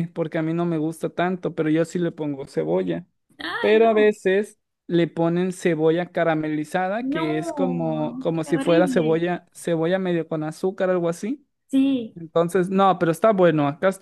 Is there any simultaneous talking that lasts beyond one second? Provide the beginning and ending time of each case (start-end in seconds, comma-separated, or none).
7.0-9.2